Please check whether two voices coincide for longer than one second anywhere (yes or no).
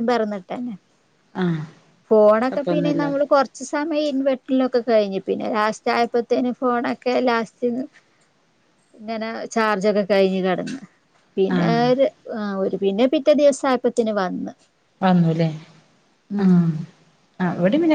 no